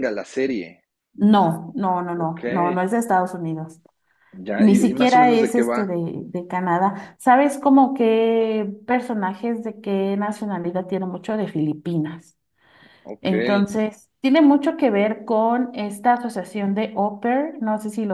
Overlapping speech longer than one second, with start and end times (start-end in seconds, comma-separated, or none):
4.6-5.9